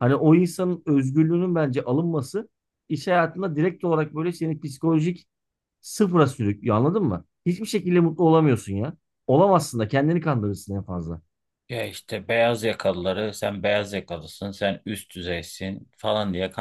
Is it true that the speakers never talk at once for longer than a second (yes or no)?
yes